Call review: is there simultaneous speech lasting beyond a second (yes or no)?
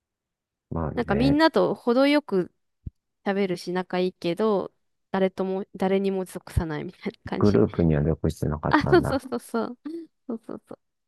no